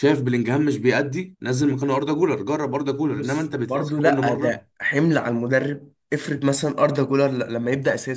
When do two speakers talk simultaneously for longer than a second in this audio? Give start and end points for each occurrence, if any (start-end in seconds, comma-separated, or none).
3.1-4.6